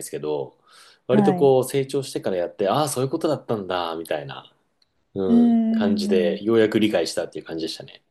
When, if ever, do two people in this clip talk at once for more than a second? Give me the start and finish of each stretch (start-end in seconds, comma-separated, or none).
5.3-6.6